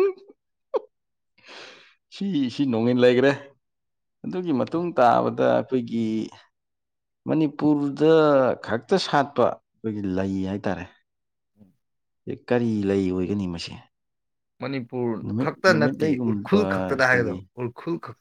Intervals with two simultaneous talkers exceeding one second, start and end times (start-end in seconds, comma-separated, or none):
15.2-17.4